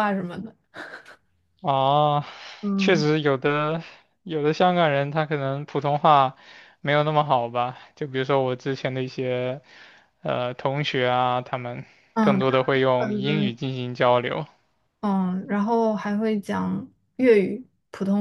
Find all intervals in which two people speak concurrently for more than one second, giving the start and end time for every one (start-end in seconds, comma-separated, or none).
12.2-13.5